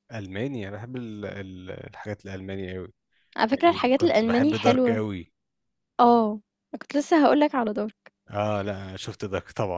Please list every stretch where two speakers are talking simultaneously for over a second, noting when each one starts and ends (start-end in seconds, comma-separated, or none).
3.5-5.0